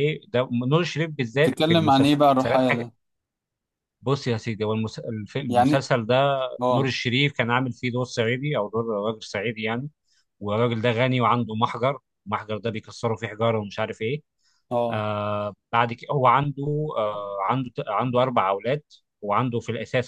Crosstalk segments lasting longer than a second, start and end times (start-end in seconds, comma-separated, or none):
1.3-2.6